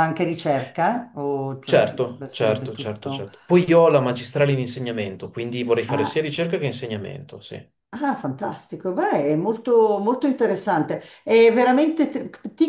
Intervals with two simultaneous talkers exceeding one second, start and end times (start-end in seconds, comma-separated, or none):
1.6-3.3